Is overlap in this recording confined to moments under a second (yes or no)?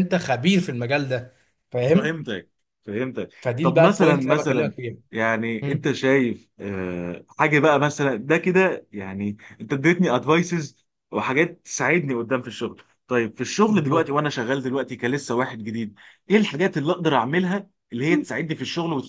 no